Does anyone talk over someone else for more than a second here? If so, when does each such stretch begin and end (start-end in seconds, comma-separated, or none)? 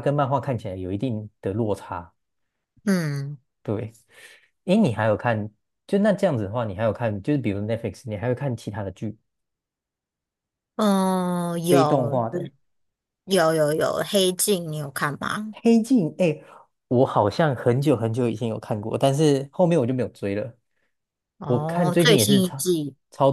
21.4-22.7